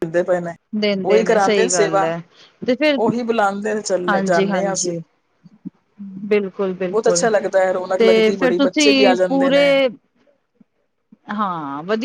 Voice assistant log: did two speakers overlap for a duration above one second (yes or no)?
yes